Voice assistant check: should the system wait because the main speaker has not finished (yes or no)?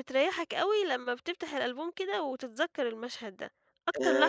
no